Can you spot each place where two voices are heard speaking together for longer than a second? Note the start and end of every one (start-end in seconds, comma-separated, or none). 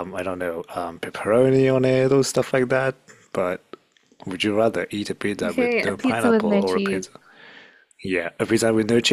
5.4-7.0